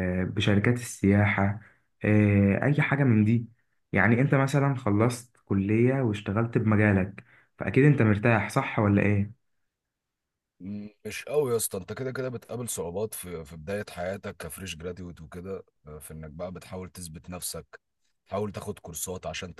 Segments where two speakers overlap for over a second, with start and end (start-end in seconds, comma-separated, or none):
none